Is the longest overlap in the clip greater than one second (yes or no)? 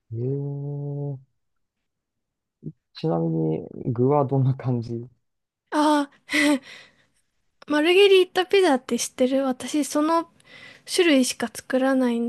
no